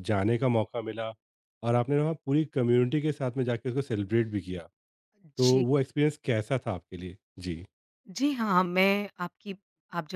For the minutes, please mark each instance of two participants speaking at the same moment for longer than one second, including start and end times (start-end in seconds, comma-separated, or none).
none